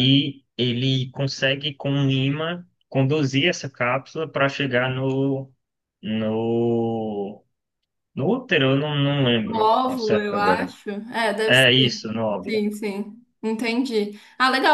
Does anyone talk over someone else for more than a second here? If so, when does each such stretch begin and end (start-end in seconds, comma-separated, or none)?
9.4-10.7